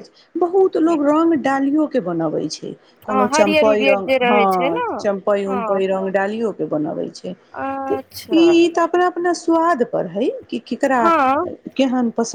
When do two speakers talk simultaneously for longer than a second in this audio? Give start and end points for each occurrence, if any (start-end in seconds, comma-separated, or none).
3.1-4.8